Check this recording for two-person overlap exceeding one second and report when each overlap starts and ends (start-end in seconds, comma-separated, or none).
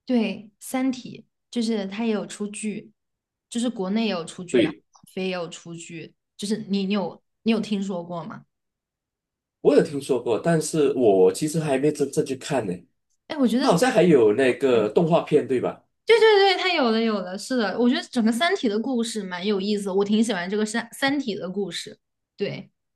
none